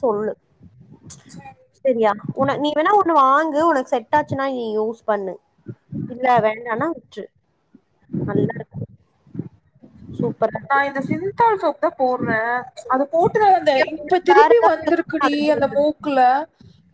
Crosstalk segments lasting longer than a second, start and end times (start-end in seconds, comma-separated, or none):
13.8-15.8